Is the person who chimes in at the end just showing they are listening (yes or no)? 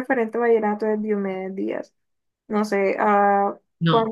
yes